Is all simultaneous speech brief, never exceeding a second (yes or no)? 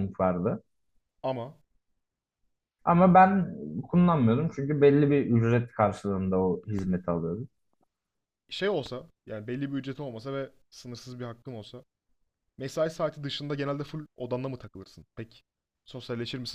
yes